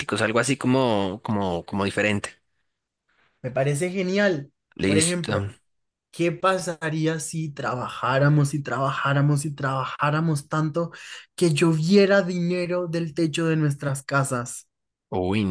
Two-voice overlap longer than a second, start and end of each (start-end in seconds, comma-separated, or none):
none